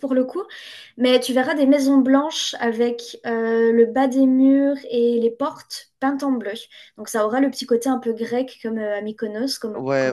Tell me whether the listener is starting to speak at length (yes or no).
yes